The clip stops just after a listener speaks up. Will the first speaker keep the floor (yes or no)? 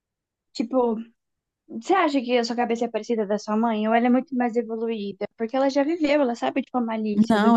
no